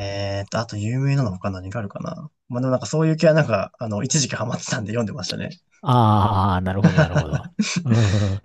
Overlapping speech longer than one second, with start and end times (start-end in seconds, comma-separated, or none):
none